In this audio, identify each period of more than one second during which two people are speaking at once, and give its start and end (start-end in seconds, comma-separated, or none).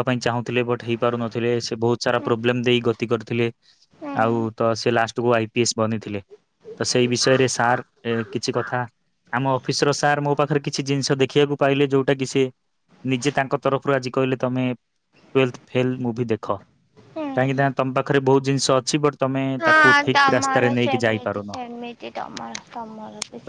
19.6-21.5